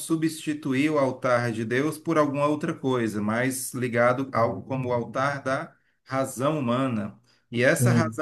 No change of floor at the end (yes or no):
yes